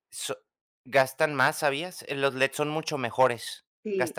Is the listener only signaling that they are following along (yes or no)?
no